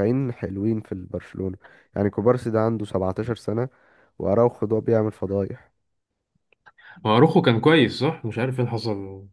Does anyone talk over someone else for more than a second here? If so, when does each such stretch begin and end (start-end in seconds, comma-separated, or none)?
none